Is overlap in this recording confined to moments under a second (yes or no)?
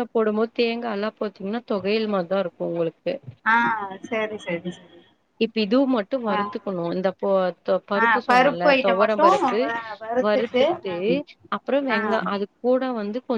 yes